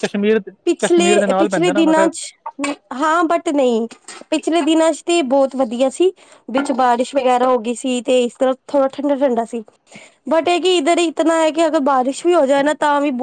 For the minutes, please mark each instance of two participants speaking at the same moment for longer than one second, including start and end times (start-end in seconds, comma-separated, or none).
0.8-2.1